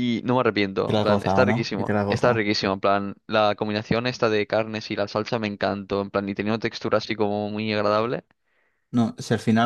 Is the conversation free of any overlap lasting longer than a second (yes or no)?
no